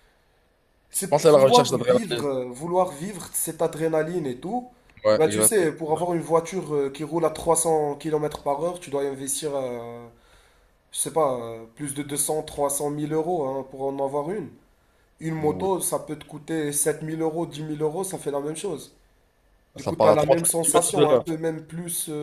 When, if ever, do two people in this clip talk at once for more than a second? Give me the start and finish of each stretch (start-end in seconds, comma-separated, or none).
0.9-2.3, 19.8-21.2